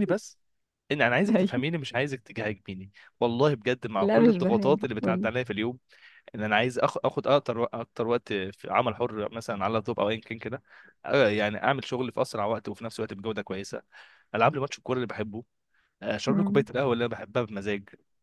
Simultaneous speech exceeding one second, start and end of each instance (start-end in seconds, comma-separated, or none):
4.0-5.3